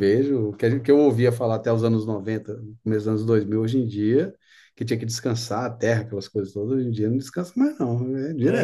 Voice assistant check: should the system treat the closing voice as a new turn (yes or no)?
yes